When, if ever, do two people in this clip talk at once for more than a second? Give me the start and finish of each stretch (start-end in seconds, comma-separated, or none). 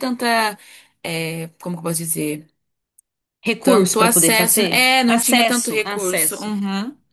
3.6-6.5